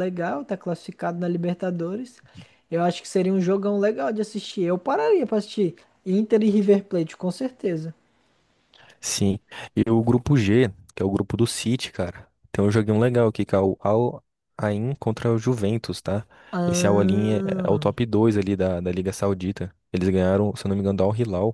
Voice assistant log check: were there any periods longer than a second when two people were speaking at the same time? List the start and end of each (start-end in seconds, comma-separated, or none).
16.6-17.9